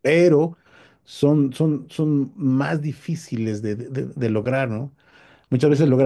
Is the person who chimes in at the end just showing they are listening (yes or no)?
yes